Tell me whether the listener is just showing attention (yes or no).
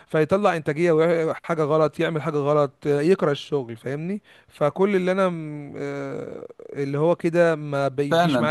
no